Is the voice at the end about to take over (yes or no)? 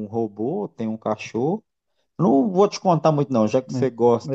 no